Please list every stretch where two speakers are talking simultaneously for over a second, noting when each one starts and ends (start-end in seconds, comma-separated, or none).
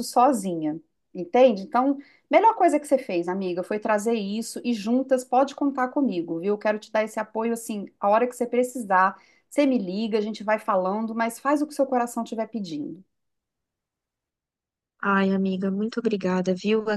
none